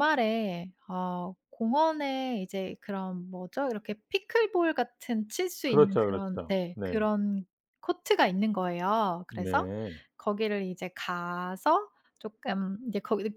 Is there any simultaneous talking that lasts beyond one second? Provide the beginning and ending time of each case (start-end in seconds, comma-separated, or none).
5.7-7.0